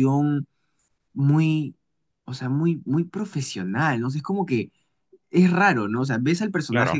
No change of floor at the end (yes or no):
yes